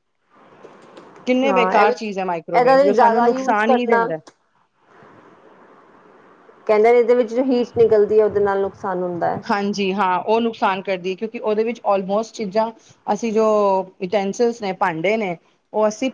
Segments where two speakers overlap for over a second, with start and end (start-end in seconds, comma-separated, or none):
2.5-4.1